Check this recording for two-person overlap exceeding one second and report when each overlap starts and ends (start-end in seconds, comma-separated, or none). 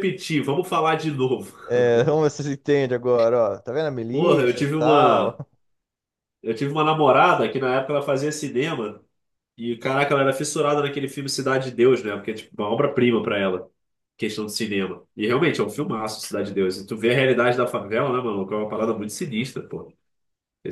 4.1-5.3